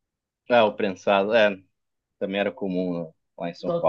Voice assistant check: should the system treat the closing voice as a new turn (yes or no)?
yes